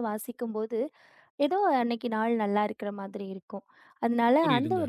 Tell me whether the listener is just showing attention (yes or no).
yes